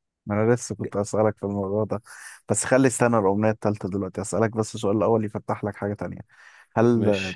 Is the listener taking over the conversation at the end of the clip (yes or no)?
no